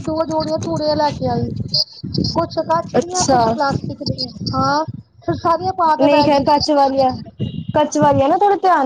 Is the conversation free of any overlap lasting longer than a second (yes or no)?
yes